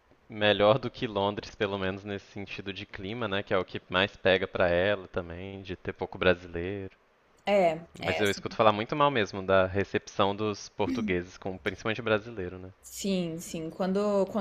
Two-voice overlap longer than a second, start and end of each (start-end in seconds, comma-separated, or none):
none